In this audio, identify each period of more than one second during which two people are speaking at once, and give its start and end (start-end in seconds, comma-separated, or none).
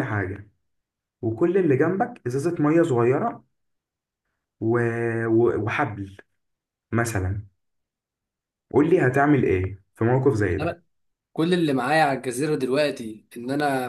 none